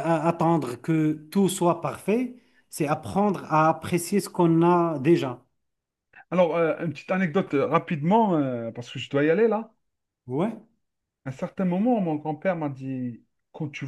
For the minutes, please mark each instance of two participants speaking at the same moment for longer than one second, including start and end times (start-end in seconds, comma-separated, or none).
none